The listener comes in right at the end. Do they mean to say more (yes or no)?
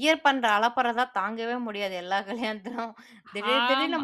no